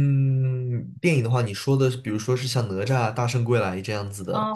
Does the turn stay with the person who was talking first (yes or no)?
no